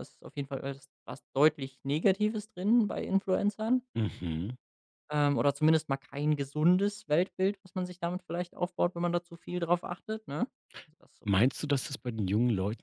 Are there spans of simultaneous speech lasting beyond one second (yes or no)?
no